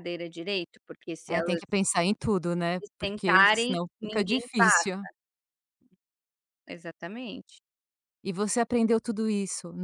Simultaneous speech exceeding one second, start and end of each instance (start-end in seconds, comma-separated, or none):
2.8-4.7